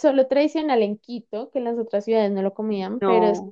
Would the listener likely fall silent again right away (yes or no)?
yes